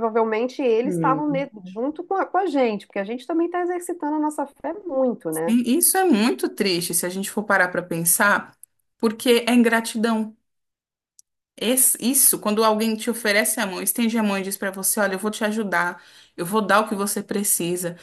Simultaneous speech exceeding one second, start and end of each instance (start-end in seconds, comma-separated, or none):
none